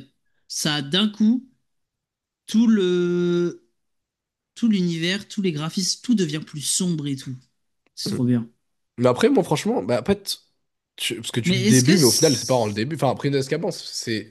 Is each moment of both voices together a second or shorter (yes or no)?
no